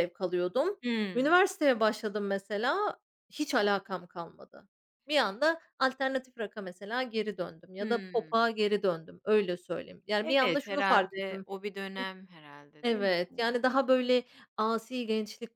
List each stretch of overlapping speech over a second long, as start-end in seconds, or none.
10.2-11.5